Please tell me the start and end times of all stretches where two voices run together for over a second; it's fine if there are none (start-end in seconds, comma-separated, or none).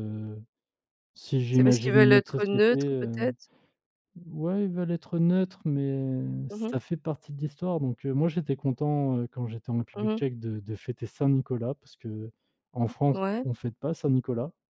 1.5-3.3